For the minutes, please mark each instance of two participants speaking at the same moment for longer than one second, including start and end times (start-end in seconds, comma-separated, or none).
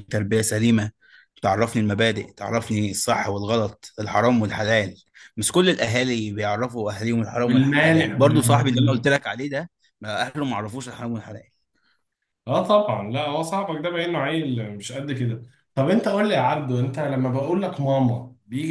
7.4-9.0